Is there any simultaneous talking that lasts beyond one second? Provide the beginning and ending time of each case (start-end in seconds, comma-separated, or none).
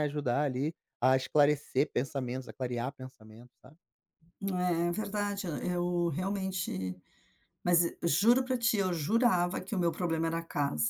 none